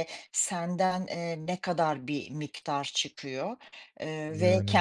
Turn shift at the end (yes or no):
no